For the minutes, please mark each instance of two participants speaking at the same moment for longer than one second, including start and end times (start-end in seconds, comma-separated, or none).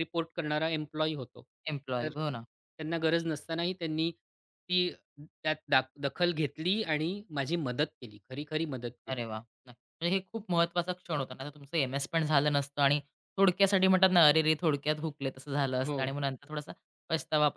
none